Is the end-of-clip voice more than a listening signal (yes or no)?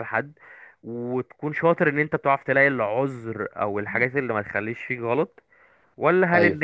no